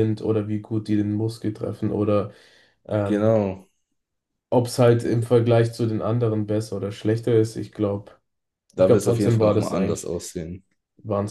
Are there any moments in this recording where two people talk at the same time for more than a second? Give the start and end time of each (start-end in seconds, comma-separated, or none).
8.8-10.1